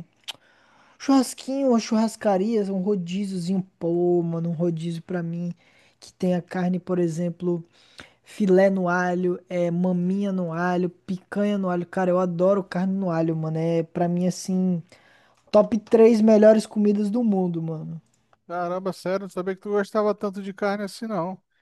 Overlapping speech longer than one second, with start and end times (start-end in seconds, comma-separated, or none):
none